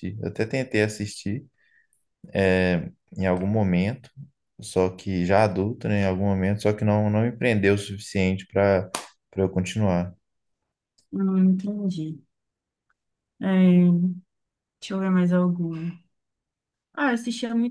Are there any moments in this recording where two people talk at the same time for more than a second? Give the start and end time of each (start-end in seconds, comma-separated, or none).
none